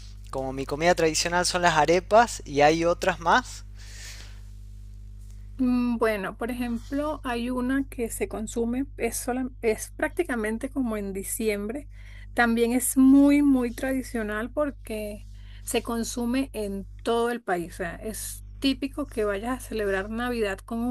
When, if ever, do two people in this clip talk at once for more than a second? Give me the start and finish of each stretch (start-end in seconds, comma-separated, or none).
none